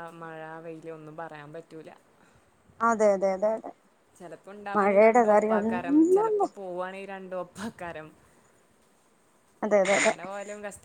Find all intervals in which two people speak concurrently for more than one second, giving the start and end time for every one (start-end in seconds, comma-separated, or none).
4.8-6.4